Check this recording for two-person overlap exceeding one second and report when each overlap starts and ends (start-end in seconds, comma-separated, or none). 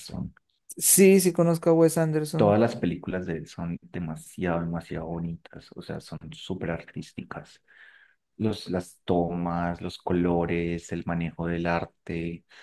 none